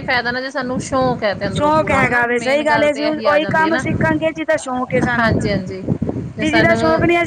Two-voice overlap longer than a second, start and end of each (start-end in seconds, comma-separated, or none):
1.6-3.8